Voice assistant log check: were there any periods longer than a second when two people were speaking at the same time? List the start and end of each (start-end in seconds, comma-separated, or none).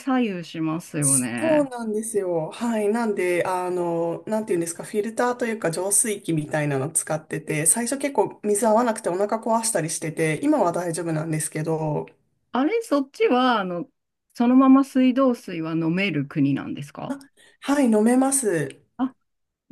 none